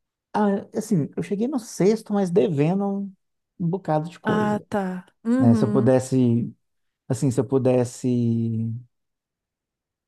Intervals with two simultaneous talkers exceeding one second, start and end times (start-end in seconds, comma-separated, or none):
none